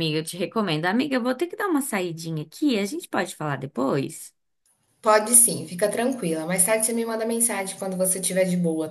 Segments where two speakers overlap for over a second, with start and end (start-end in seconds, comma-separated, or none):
none